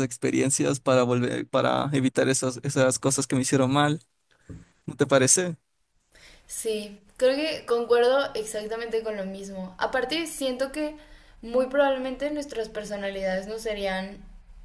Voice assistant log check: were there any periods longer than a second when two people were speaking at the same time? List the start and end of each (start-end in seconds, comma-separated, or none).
none